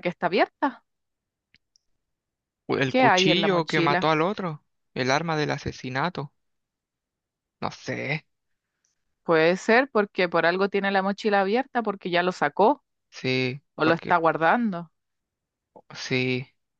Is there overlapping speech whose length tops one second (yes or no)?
yes